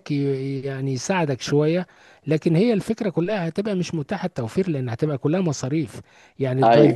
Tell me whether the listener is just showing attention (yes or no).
yes